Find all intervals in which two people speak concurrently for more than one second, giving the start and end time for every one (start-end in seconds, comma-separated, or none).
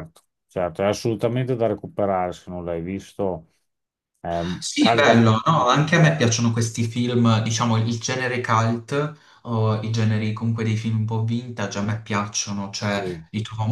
4.6-6.3